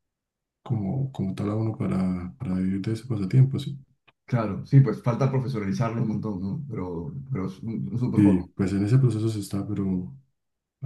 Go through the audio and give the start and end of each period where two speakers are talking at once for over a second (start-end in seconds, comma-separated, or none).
none